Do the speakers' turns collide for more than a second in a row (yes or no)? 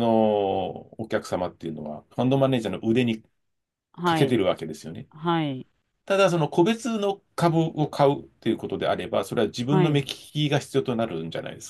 no